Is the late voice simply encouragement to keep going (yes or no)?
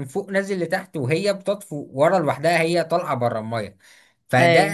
yes